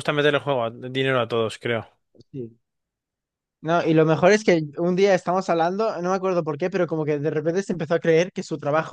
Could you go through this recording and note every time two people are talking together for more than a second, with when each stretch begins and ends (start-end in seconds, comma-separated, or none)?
none